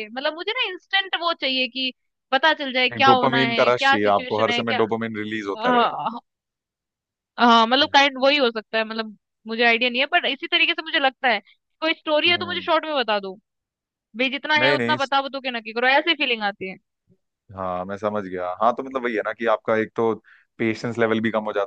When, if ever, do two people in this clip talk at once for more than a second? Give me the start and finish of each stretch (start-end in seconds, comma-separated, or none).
3.0-4.8